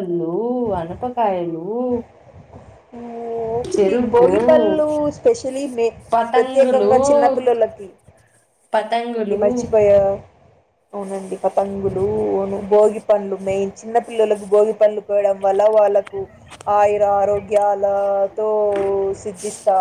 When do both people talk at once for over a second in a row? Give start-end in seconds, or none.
none